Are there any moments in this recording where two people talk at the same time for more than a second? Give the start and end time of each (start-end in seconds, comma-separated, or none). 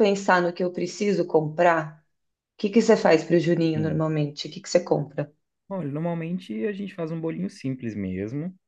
none